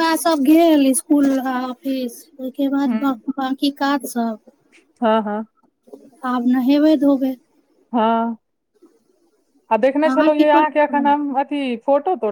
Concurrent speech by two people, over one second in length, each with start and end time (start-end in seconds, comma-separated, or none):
9.8-11.1